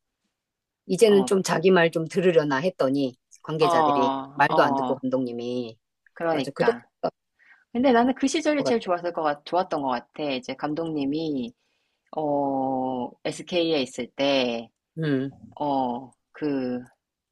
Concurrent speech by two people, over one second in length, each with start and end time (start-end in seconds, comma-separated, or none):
3.6-5.0